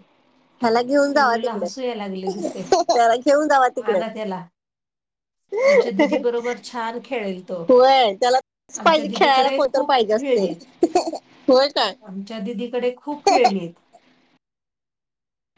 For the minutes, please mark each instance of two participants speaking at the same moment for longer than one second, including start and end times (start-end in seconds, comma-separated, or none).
8.8-10.5